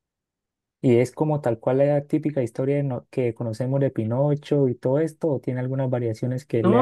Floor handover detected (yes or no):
yes